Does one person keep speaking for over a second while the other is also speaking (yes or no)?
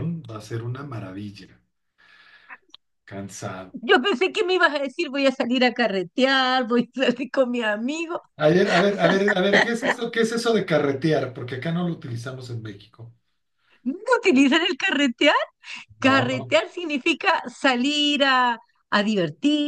no